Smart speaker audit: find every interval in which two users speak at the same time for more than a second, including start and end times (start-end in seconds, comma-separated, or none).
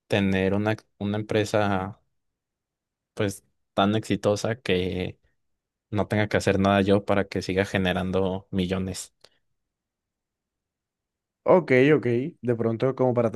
none